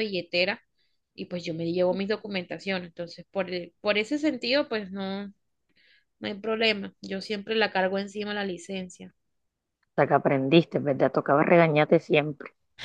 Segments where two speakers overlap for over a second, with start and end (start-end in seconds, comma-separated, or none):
none